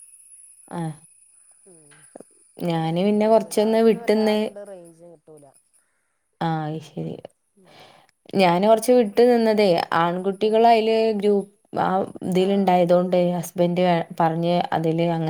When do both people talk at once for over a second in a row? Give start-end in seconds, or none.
2.7-4.4